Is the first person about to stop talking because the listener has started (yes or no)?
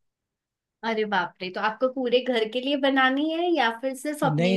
yes